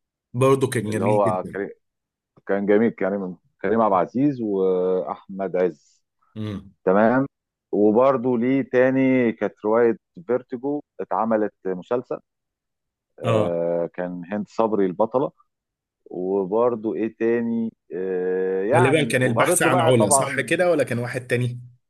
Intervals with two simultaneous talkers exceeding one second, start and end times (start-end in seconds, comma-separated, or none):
18.7-20.5